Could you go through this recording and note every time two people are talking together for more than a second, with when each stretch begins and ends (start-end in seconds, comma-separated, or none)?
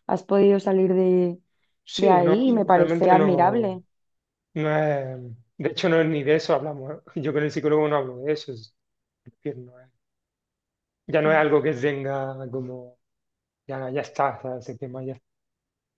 2.0-3.8